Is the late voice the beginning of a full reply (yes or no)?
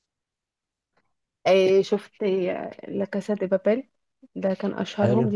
no